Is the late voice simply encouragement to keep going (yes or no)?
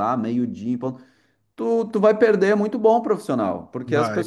yes